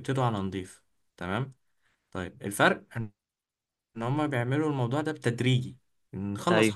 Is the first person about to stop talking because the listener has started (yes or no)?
no